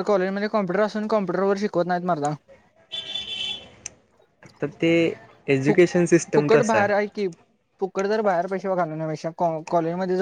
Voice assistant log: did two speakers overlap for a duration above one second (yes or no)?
yes